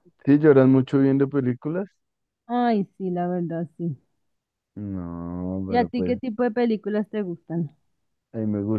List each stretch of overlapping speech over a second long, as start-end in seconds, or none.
none